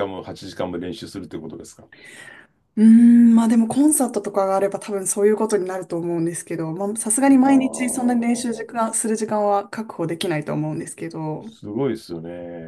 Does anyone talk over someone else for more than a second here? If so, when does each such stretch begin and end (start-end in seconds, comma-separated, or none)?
7.2-8.8